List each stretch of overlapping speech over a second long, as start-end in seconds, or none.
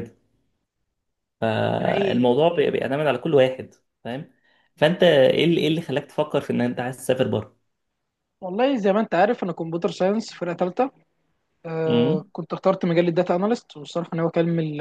none